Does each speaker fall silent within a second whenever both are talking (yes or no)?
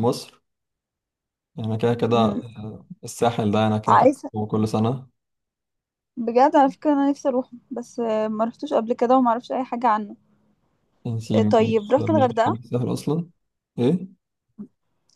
no